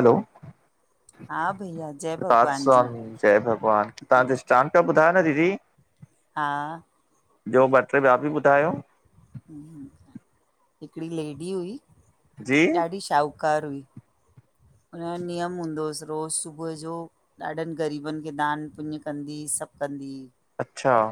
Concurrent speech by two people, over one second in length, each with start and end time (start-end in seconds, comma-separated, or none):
1.3-2.8